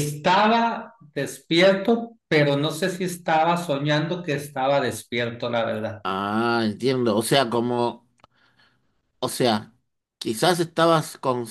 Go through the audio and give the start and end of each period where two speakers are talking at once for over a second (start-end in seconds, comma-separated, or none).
none